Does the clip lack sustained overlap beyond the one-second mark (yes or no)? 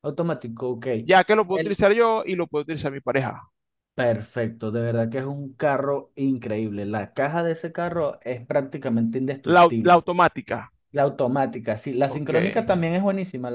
yes